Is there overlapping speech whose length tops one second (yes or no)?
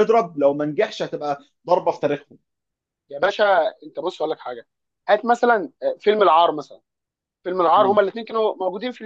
no